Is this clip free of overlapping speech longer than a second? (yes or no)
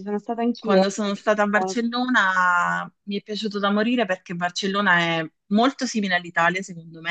no